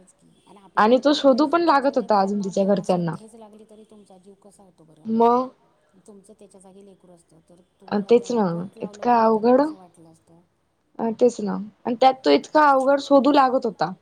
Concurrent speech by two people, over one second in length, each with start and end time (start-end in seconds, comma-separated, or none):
1.1-3.1